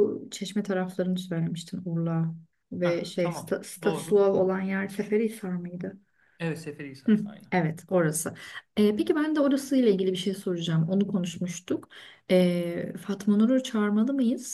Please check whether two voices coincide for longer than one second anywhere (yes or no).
yes